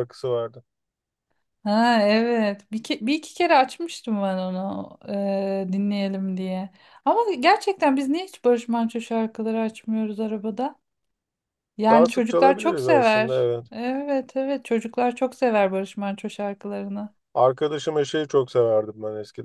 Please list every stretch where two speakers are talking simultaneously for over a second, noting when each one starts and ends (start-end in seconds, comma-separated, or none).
11.9-13.7